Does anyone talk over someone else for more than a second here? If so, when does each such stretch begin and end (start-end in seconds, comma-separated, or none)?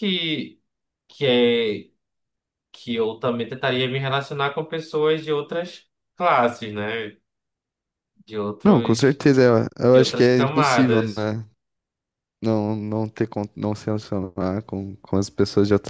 9.9-11.3